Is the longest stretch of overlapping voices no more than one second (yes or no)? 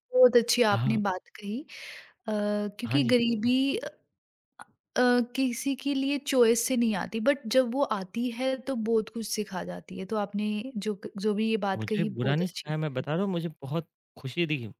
no